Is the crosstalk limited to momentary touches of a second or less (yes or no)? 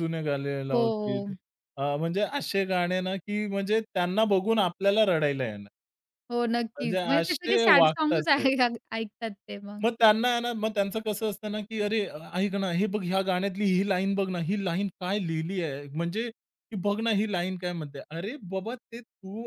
no